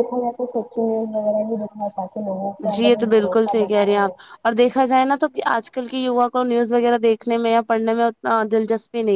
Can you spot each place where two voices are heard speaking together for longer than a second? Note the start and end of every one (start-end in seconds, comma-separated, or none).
2.7-4.1